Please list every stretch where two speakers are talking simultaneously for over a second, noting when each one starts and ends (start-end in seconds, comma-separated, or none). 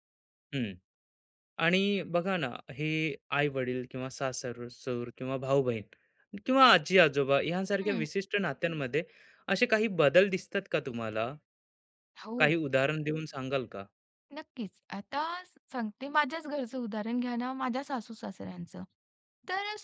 none